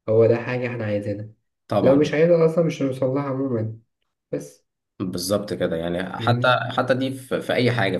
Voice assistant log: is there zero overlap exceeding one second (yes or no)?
yes